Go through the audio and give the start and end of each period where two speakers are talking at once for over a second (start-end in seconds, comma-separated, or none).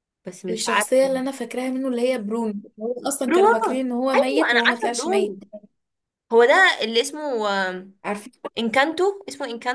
3.3-5.4